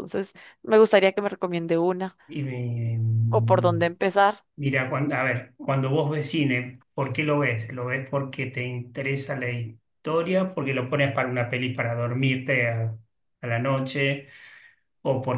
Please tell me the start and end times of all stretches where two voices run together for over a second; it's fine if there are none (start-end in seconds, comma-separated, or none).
none